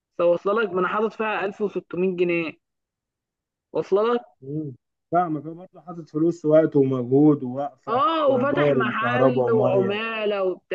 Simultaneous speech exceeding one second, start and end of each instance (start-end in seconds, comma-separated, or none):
7.9-9.9